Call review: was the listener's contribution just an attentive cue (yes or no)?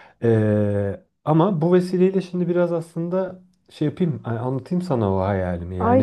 no